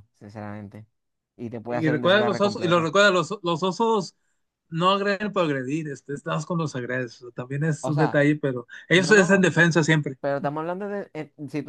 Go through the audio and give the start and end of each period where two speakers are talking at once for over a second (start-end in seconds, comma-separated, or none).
1.7-2.9